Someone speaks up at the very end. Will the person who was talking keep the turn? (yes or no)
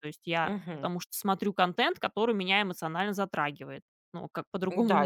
no